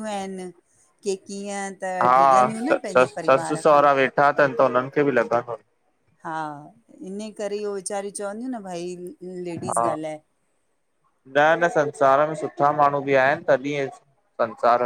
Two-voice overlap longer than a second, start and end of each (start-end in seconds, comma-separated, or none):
2.0-3.8